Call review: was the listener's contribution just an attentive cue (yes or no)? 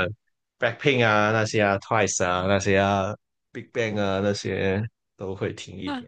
no